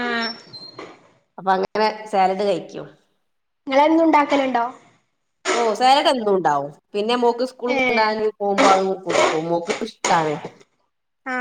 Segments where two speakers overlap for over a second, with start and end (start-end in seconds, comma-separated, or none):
none